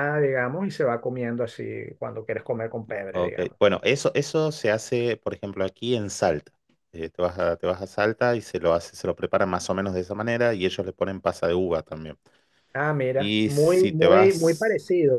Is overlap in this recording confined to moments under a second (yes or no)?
no